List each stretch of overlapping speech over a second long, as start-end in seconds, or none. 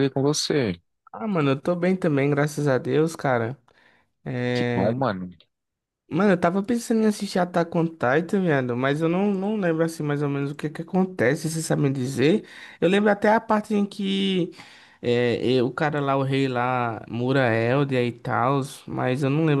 none